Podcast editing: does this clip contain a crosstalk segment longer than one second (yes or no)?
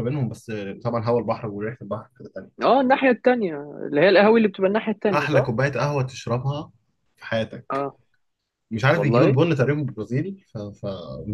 no